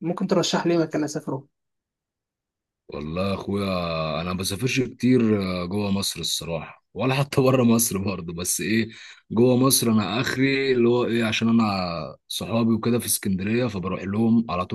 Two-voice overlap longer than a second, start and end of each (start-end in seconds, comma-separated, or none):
none